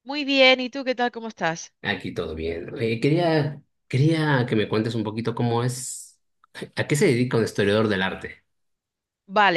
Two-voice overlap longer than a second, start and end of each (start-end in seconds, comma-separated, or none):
none